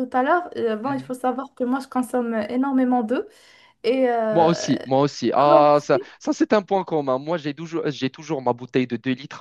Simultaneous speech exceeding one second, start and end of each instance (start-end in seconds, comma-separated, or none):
none